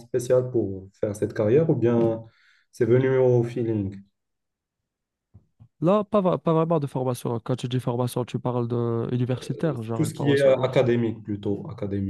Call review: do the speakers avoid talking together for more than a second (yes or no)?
no